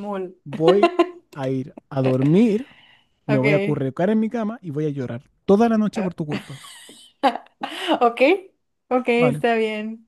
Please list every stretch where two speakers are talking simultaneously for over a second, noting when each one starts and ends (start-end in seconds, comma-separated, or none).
none